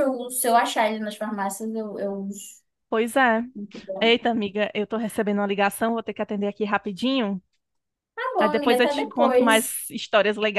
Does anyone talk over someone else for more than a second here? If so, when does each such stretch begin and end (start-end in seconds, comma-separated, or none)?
8.4-9.8